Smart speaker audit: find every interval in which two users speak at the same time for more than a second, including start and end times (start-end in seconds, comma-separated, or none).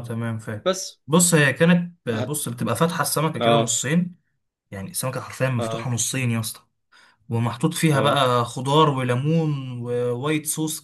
none